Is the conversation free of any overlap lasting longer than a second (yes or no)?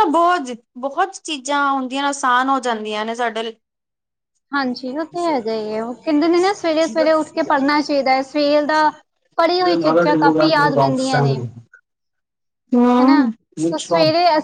yes